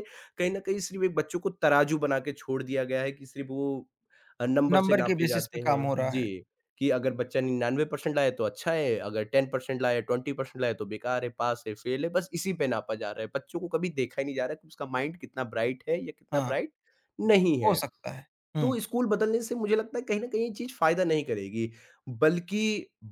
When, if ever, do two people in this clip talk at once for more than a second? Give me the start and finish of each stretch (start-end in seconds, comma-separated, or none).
4.8-6.3